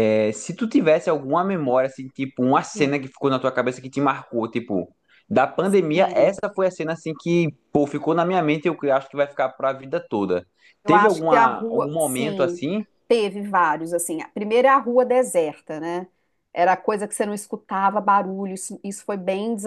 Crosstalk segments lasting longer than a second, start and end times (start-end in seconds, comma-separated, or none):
10.8-12.6